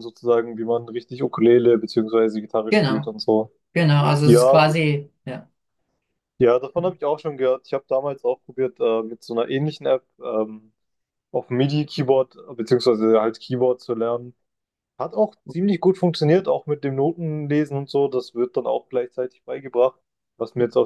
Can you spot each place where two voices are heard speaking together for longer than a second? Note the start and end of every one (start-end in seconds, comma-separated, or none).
none